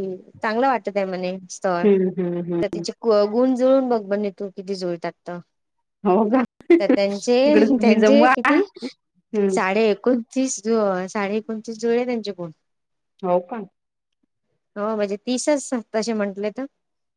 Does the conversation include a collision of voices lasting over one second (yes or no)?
yes